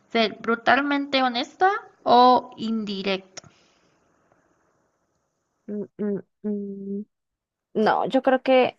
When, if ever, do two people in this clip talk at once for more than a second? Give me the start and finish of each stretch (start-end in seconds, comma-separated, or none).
none